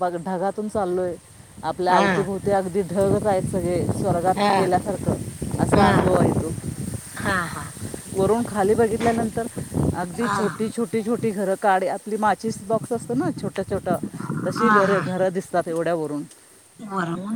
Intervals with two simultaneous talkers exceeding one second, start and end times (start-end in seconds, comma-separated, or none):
none